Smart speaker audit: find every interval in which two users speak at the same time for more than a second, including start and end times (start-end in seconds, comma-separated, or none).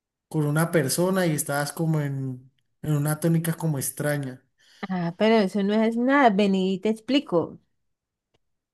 none